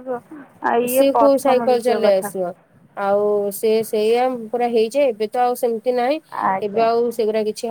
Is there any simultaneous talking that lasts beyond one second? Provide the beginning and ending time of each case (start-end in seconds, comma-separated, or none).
0.9-2.3